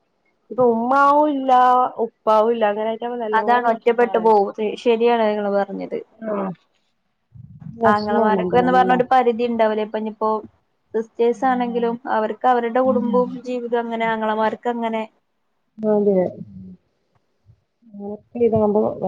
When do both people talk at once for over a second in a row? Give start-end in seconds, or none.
none